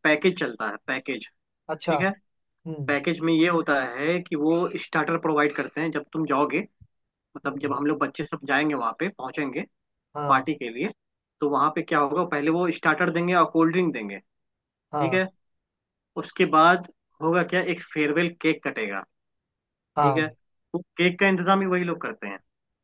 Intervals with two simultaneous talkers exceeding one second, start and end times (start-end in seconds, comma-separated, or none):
none